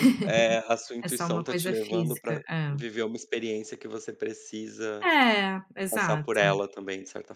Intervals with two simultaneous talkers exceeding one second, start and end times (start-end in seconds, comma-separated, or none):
1.0-2.8